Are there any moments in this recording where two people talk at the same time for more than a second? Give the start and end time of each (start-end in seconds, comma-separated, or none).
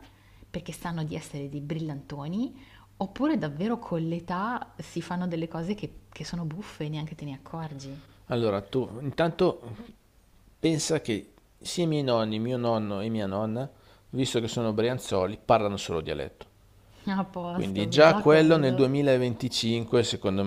17.5-18.9